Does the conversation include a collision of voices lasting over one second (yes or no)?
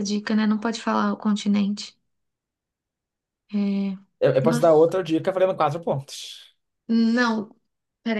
no